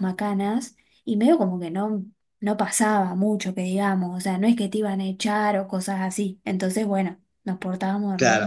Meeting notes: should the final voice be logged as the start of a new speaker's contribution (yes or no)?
yes